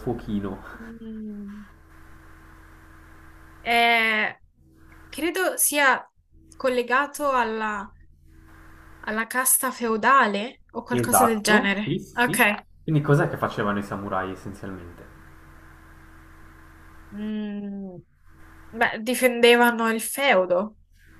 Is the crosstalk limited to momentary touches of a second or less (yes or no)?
no